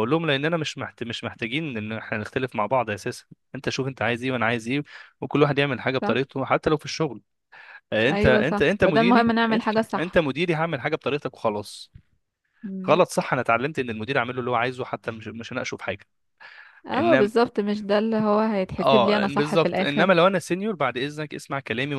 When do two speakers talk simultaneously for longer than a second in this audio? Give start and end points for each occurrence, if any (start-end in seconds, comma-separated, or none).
8.1-10.2, 18.8-20.1